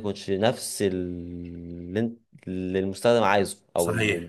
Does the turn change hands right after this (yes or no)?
yes